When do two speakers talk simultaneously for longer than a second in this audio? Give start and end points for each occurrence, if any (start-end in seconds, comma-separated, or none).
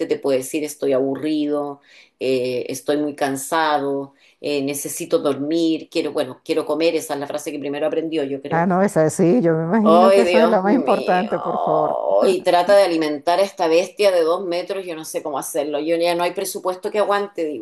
9.8-11.3